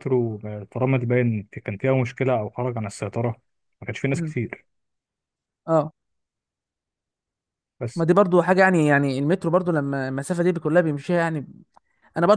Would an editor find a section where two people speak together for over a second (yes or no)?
no